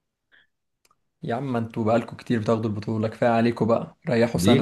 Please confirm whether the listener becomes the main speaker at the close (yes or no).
yes